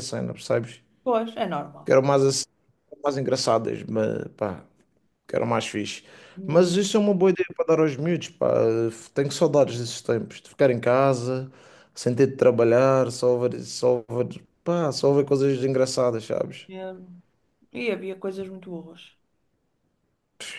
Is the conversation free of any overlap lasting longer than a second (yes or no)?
yes